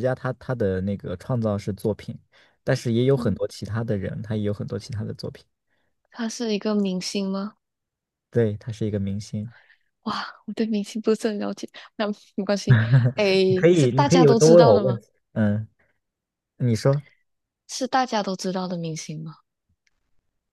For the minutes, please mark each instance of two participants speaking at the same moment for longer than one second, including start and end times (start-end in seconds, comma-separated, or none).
13.4-15.0